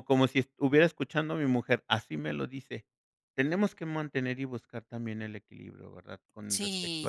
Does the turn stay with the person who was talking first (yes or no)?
no